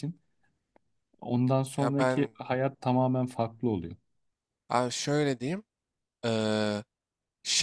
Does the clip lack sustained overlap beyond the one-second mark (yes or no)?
yes